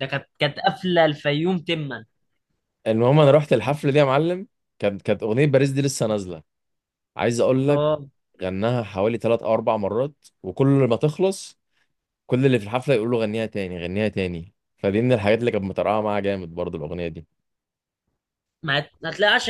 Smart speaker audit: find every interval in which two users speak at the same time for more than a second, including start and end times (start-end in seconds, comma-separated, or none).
none